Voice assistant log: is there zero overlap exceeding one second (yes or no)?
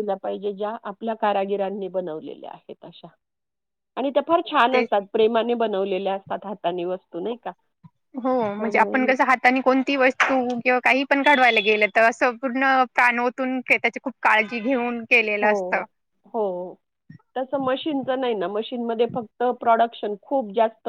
yes